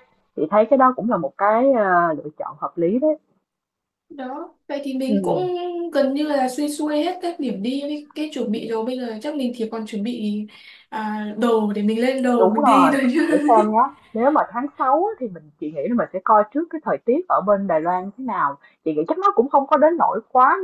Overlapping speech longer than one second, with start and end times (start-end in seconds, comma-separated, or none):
none